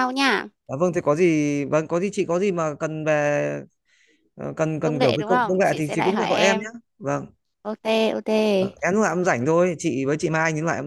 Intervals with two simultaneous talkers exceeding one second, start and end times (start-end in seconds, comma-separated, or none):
4.8-6.7